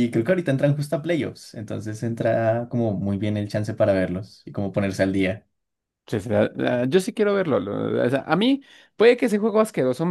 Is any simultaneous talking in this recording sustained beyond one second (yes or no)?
no